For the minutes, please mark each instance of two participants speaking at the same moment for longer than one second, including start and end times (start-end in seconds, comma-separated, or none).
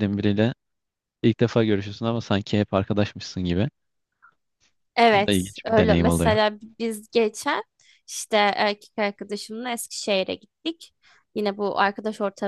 5.1-6.4